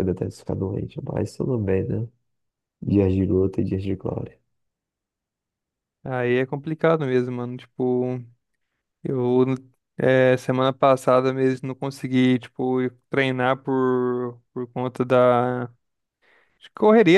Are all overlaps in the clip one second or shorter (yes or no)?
yes